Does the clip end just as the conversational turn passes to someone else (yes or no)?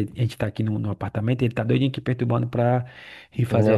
no